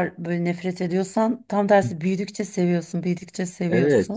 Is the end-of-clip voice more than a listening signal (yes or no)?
yes